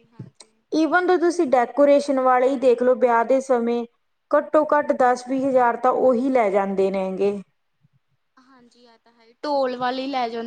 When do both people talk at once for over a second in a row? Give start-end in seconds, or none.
none